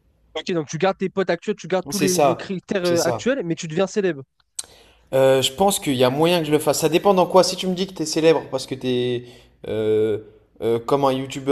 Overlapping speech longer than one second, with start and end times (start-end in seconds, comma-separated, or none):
1.9-3.2